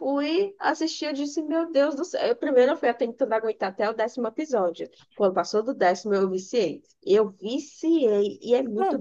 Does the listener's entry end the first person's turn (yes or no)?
no